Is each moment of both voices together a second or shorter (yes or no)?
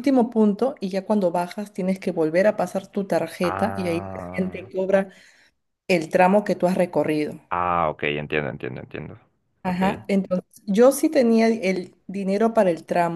no